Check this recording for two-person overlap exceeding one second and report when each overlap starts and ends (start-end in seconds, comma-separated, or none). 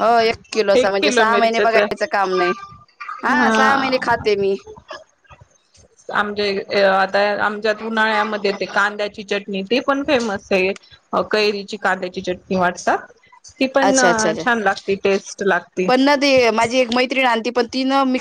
0.8-2.1